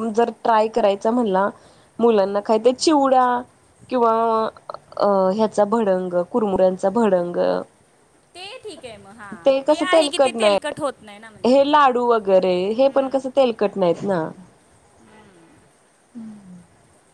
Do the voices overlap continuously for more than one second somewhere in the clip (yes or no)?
yes